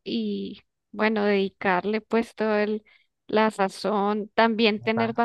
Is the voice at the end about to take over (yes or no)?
no